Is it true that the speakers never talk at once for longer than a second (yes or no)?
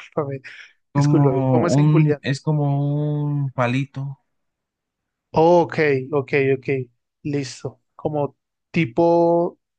no